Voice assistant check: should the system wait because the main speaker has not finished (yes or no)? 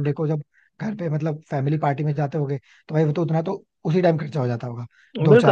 no